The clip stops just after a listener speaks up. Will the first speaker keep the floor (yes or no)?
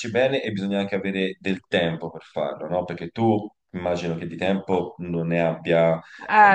no